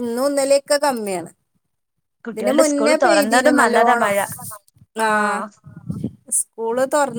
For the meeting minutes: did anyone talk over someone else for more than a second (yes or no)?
yes